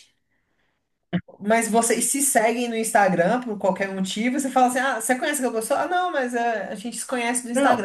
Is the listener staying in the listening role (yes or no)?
no